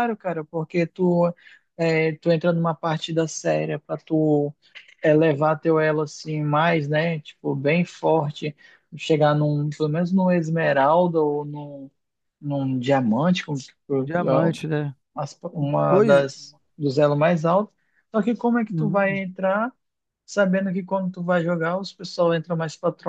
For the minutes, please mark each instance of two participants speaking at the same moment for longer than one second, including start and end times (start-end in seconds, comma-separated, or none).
none